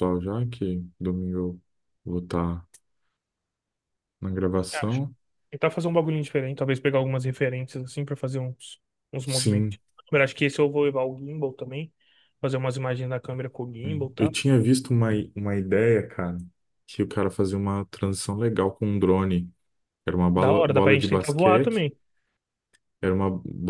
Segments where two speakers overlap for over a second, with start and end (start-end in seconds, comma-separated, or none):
20.4-21.9